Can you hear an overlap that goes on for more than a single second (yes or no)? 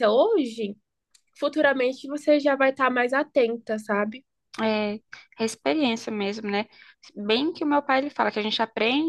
no